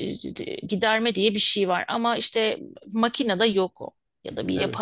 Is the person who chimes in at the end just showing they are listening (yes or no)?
yes